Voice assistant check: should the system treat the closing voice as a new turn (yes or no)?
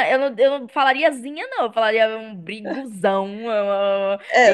yes